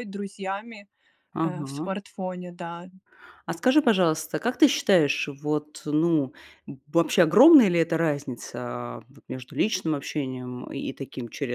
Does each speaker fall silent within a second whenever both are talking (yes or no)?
yes